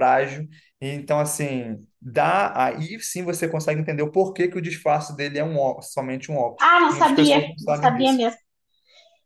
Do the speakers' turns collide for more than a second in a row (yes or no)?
yes